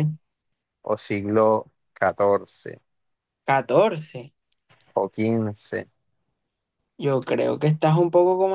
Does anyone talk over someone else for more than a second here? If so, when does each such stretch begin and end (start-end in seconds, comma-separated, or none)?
none